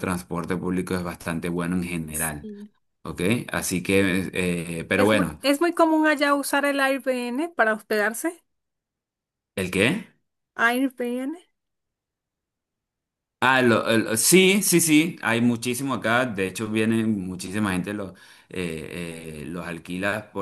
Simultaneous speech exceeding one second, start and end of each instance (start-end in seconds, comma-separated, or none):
none